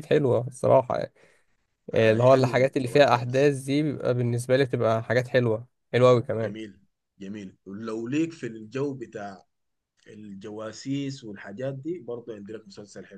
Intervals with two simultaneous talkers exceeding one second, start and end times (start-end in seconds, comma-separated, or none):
1.9-3.5